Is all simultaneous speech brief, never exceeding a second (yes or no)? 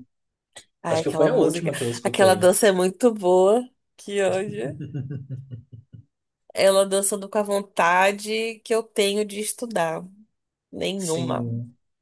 no